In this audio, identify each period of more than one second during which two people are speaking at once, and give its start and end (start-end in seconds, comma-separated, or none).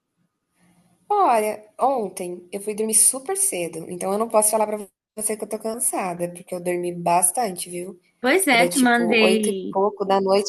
8.5-9.8